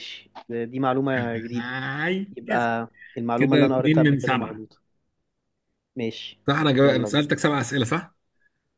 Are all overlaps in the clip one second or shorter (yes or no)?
no